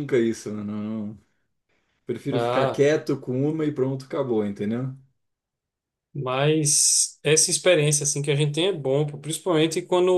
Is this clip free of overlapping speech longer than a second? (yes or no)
yes